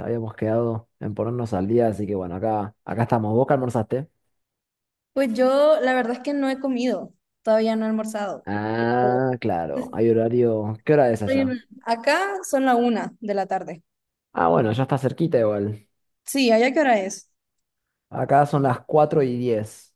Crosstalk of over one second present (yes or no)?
no